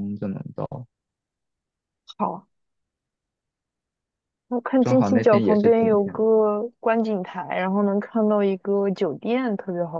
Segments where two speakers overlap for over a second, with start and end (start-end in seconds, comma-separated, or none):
4.8-6.2